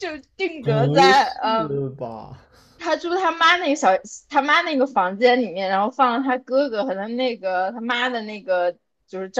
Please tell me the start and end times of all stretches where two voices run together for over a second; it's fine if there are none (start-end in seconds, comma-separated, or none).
0.6-1.8